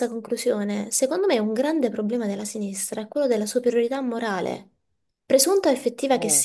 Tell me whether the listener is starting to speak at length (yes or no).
no